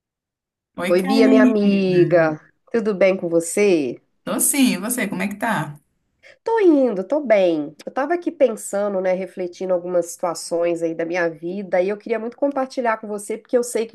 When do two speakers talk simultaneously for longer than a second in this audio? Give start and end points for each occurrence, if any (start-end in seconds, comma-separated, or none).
0.9-2.4